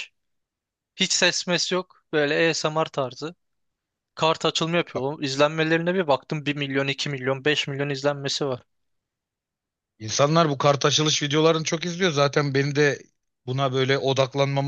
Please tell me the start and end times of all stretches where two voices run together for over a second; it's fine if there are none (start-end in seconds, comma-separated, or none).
none